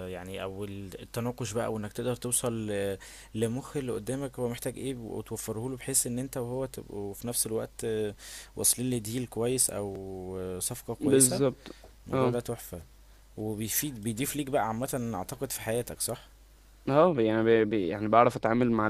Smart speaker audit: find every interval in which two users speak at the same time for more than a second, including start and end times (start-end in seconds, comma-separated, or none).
none